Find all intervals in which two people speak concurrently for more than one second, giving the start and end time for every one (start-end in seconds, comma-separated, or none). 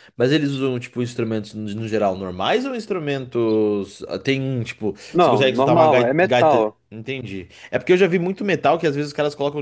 5.1-6.8